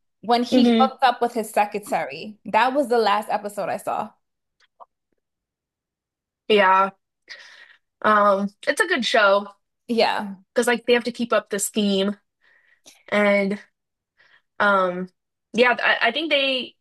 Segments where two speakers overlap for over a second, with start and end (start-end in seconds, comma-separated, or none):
none